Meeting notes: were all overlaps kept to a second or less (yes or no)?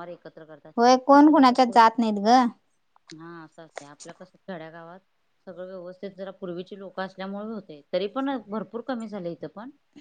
yes